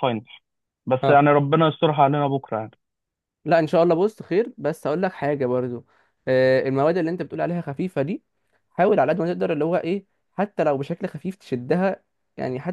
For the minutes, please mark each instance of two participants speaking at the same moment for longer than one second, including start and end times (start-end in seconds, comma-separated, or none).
none